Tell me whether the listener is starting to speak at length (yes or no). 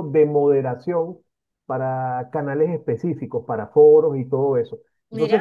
no